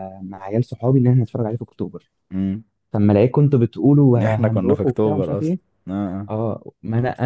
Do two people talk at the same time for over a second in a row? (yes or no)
yes